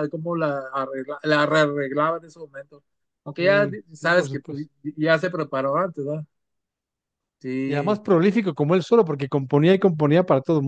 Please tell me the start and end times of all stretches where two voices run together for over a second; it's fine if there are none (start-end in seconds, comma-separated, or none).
3.4-4.7